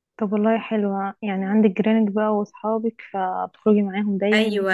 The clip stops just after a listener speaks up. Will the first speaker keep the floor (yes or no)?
no